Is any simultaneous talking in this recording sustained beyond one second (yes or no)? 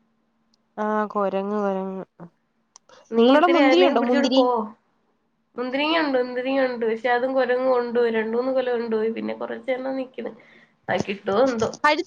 no